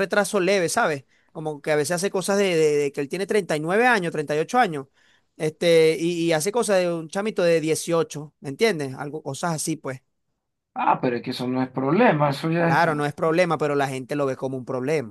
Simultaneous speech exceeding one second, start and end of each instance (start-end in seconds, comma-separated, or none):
none